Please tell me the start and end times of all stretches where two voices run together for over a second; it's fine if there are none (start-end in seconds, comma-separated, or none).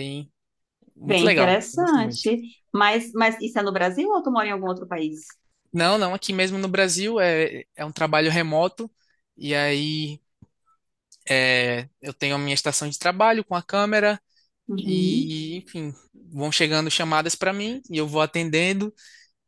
1.1-2.3